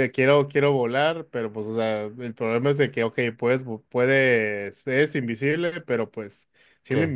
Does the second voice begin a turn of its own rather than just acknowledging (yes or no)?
no